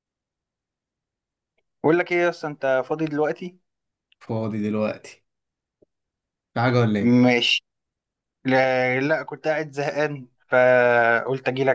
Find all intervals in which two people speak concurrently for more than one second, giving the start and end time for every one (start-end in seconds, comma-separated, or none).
none